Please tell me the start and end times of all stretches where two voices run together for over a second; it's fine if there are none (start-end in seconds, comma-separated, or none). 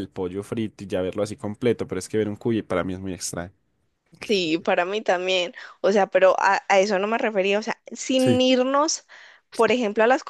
none